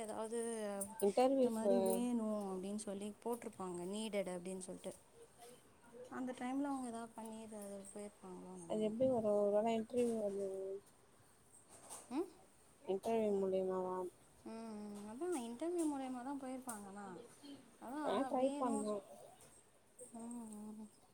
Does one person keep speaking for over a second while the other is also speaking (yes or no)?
no